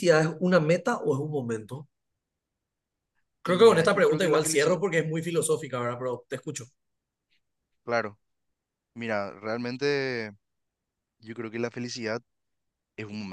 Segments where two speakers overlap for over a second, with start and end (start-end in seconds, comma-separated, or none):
3.5-4.8